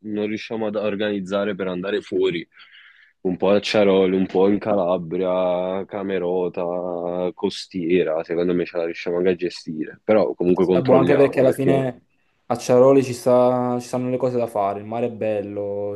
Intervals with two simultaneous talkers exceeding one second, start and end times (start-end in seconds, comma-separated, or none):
10.5-11.9